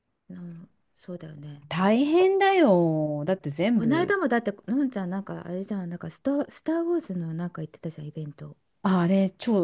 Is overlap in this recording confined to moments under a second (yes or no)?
yes